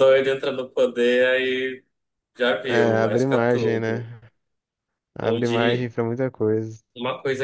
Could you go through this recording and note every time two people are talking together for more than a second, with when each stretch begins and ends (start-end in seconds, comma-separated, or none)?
2.7-4.0